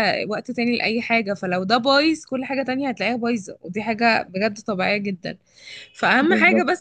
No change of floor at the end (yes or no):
yes